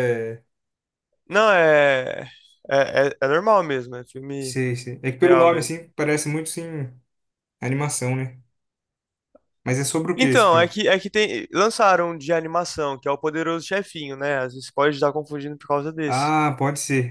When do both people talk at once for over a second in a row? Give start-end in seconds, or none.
none